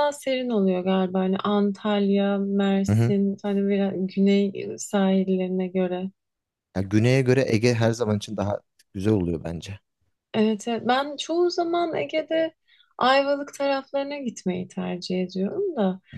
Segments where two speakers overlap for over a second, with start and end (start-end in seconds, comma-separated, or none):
none